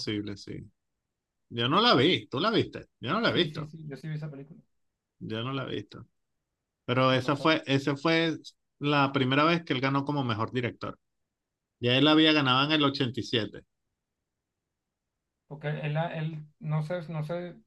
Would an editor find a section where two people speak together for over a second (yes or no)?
no